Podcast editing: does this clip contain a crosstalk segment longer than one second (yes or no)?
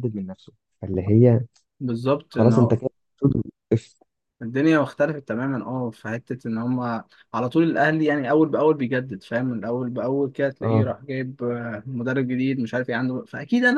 no